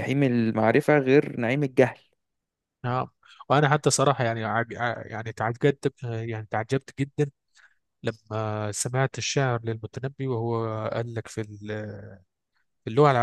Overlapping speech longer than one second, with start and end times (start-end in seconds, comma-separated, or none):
none